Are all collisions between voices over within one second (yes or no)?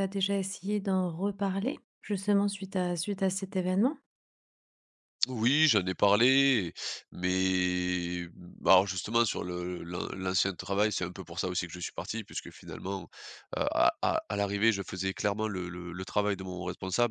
yes